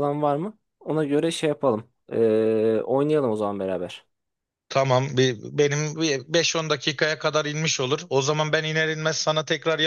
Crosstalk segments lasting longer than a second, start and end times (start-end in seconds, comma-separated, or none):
none